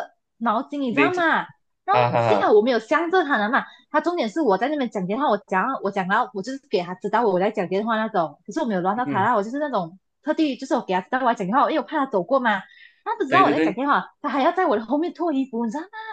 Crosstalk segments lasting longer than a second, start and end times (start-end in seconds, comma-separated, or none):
none